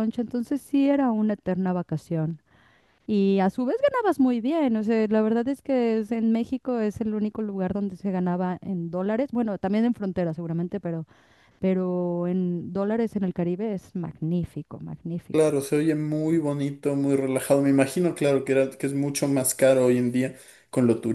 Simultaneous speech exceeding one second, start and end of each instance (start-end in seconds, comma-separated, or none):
none